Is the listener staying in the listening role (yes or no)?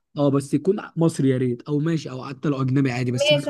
no